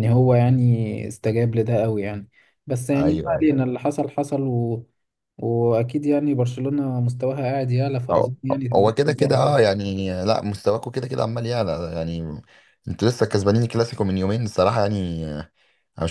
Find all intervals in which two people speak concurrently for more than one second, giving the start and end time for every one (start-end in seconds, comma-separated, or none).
8.1-9.7